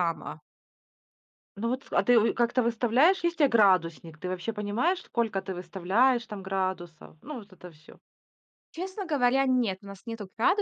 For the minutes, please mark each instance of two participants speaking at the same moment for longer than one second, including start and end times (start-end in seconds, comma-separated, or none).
none